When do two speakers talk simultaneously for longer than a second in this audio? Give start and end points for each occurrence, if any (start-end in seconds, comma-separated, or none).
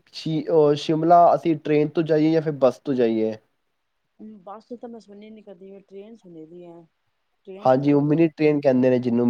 none